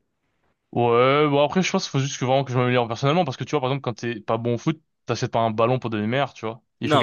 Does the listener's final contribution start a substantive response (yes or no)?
yes